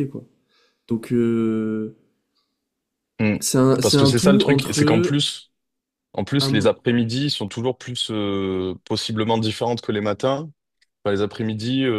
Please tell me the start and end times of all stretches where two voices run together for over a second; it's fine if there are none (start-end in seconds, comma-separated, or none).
3.8-5.2